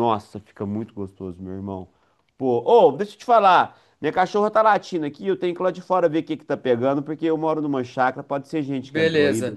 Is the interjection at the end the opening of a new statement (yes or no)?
yes